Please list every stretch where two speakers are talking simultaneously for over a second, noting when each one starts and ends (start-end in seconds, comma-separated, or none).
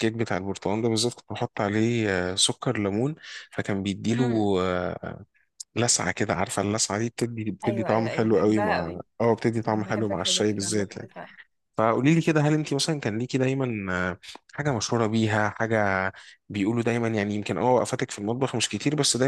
7.6-9.0, 9.7-11.1